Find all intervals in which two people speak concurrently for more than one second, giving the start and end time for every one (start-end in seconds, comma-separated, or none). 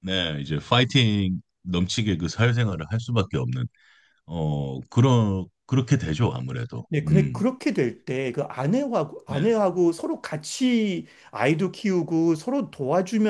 none